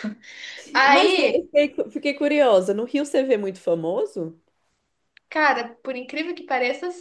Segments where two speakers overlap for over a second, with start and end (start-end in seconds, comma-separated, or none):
none